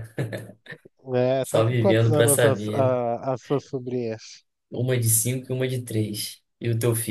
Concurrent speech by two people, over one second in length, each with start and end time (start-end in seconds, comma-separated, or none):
1.4-3.0